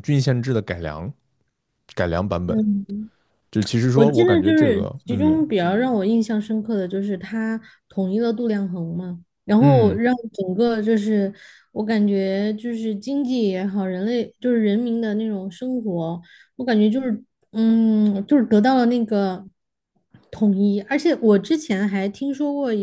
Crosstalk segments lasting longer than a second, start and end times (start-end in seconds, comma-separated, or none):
3.9-5.4